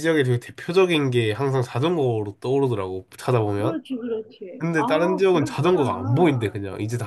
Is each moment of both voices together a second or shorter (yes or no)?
no